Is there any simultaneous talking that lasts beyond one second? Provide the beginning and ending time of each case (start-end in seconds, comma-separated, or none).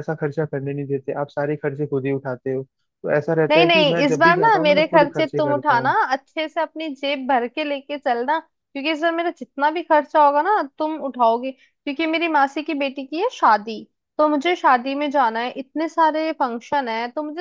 3.5-5.9